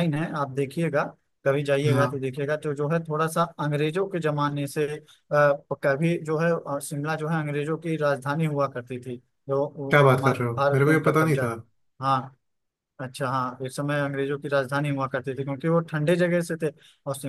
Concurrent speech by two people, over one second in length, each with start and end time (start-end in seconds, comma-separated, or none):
9.9-11.5